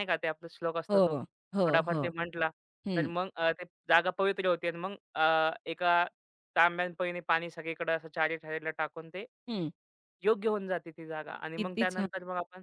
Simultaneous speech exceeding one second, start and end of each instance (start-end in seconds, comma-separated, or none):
none